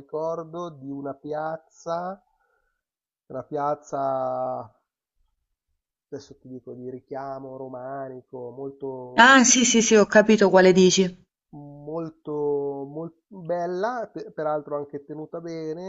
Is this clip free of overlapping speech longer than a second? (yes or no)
yes